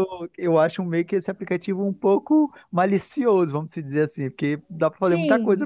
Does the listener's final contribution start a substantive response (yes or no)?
yes